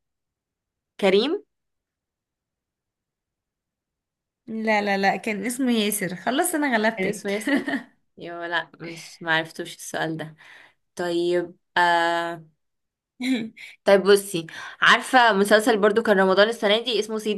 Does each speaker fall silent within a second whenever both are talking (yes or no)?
yes